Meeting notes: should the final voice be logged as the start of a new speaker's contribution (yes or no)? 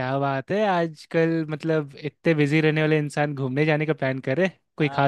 yes